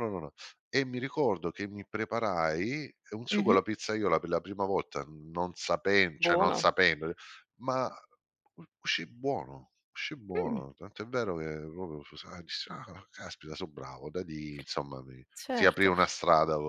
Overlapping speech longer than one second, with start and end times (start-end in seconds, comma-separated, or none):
none